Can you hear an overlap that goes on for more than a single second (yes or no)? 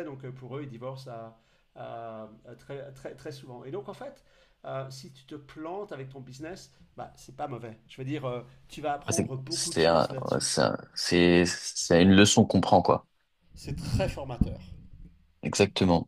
yes